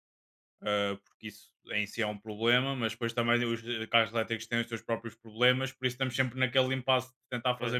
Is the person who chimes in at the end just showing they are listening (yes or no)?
yes